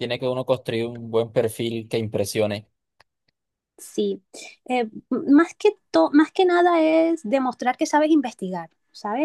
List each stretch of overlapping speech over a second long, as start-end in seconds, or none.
none